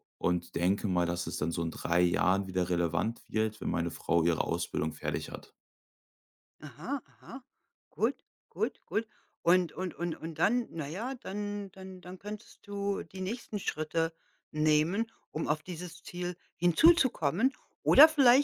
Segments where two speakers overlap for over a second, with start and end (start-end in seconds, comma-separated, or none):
none